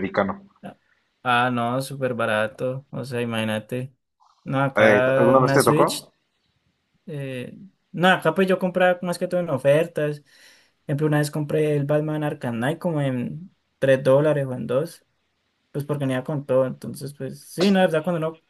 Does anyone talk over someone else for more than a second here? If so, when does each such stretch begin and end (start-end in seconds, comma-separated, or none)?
4.8-6.1